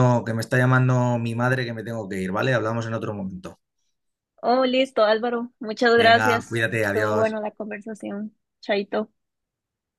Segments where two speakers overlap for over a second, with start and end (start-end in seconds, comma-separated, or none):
6.0-7.4